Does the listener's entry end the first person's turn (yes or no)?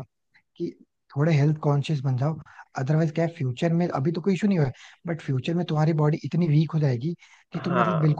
no